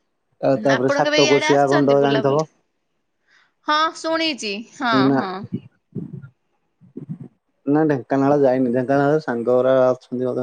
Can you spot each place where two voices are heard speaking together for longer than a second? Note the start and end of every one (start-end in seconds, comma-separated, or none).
0.8-2.5